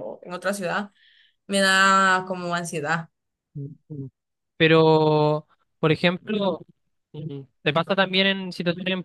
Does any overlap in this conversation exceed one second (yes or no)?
no